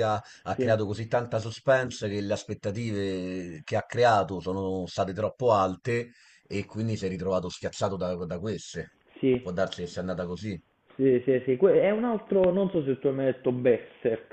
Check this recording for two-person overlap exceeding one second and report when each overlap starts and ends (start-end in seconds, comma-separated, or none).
none